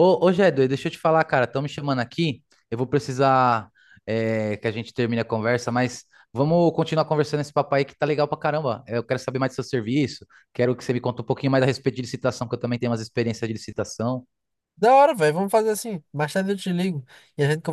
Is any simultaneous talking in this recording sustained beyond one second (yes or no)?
no